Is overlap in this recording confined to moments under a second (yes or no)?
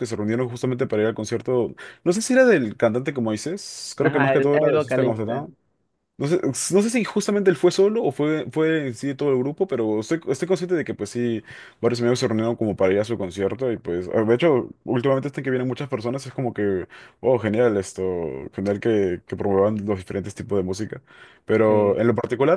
no